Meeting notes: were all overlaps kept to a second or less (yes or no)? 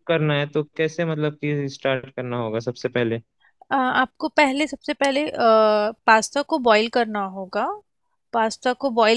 yes